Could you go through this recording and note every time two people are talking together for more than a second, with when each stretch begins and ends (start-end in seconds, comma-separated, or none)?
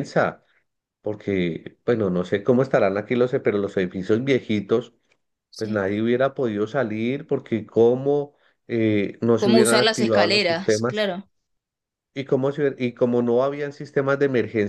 9.4-11.1